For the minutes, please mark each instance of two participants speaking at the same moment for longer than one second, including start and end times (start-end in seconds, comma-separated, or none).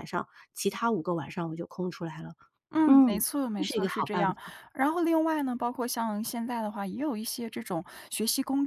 2.9-4.3